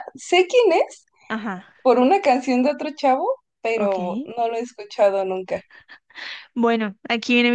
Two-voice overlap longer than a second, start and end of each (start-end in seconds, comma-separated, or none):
none